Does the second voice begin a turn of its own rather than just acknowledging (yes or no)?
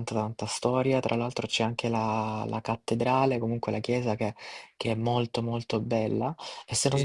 no